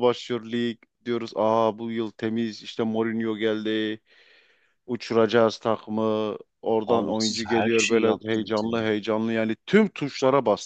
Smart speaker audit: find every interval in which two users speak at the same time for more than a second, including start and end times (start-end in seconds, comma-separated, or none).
6.8-8.7